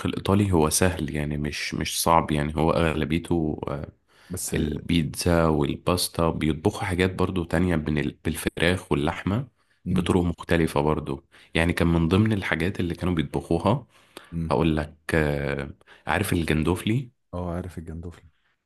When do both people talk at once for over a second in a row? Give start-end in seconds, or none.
none